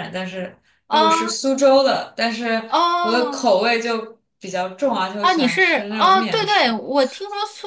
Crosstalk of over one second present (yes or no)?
yes